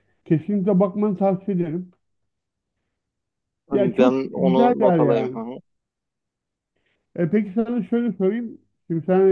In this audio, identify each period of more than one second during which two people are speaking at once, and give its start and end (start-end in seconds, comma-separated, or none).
4.0-5.4